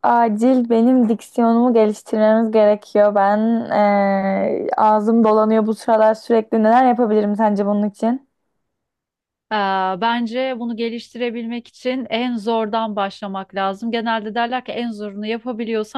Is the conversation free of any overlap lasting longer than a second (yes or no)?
yes